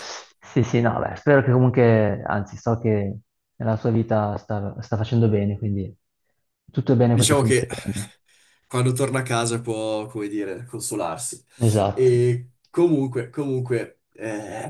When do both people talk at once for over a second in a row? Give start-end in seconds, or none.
none